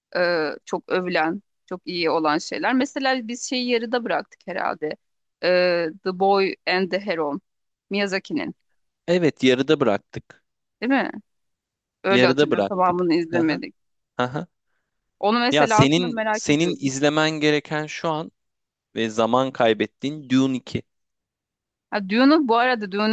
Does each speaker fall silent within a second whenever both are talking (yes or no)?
no